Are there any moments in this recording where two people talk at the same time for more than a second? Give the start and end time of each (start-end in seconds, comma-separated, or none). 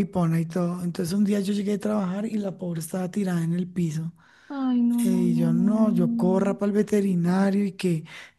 5.0-6.6